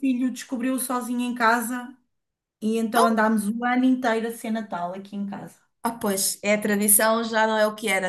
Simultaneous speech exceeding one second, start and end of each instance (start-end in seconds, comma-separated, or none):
none